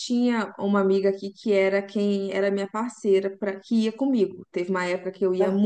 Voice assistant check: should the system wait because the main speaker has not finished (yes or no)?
yes